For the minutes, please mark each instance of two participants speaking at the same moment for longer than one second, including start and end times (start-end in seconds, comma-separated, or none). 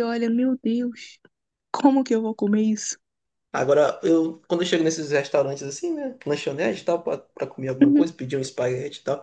none